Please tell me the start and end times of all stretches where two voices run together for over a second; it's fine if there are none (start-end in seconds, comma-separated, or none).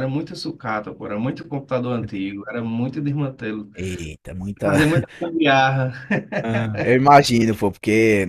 none